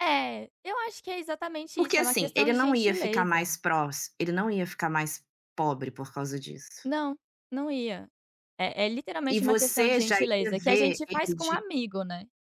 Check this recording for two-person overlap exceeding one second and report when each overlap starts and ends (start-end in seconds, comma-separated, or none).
1.7-3.5, 9.3-11.6